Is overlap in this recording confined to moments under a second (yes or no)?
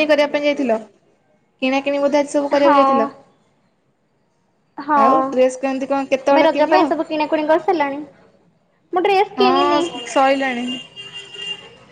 no